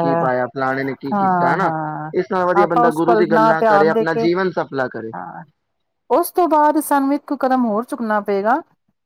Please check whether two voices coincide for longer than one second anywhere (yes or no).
yes